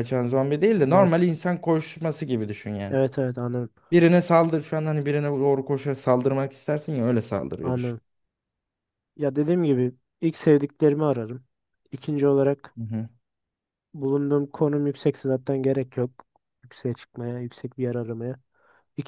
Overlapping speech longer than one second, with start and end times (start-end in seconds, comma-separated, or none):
none